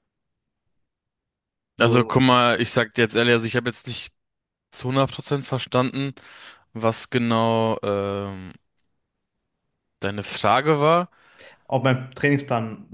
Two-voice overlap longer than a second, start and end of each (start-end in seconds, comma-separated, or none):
none